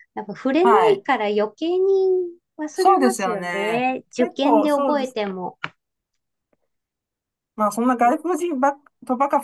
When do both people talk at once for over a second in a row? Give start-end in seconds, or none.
2.7-5.2